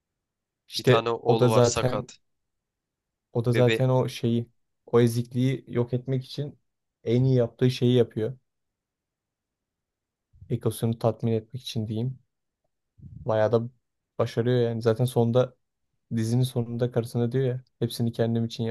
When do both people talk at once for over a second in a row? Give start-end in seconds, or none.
0.8-2.1